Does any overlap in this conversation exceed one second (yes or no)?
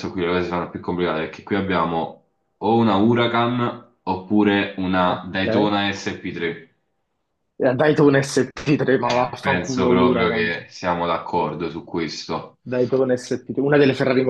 yes